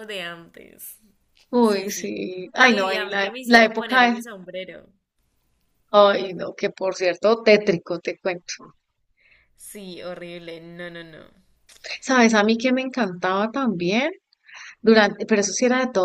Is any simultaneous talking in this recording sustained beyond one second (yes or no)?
yes